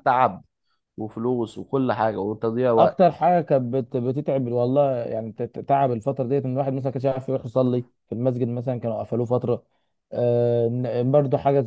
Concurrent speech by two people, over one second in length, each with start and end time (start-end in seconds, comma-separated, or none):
none